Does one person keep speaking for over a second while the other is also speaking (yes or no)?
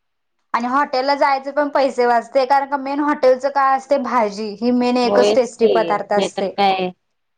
yes